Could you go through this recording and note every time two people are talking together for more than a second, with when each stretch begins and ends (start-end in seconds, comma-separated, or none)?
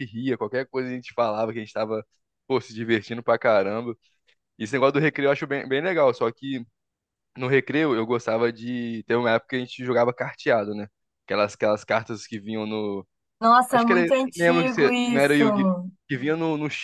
13.7-15.4